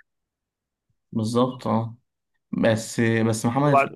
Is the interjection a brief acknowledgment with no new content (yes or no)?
yes